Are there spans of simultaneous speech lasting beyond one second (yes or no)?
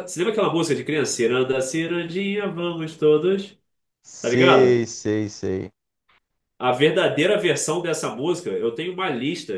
no